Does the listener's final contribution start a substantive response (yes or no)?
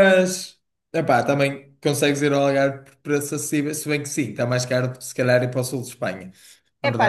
yes